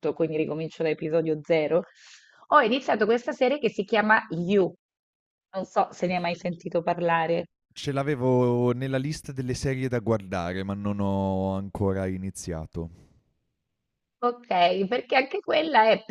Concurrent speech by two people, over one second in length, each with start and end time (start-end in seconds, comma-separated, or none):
none